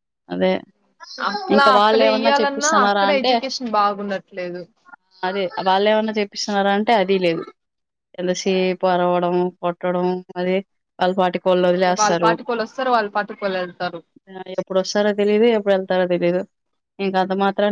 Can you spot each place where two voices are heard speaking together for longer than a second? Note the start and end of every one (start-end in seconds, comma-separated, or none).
1.6-3.3